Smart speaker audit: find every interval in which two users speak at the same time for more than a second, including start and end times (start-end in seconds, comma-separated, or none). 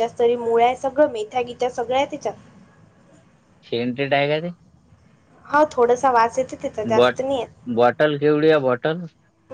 none